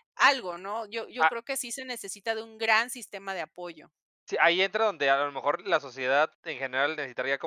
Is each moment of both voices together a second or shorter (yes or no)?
yes